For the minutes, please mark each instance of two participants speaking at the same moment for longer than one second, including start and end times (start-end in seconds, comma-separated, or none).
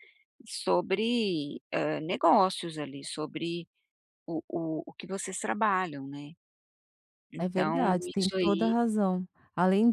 7.4-8.7